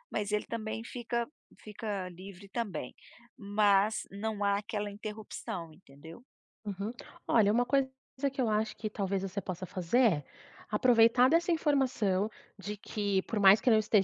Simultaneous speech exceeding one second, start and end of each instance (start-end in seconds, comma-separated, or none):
none